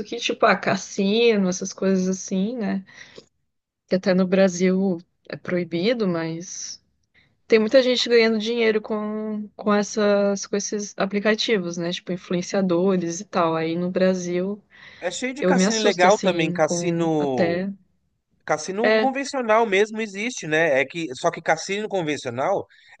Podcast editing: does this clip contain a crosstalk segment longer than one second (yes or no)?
yes